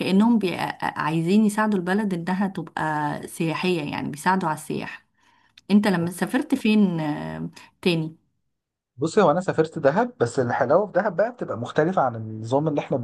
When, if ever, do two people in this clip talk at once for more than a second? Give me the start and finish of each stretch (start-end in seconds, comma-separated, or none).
none